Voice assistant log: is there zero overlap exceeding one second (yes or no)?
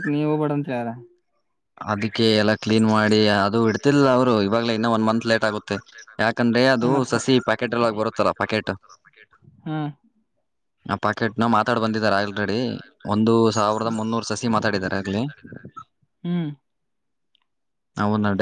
yes